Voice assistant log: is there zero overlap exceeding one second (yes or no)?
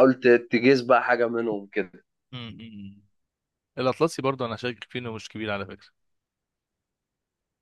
yes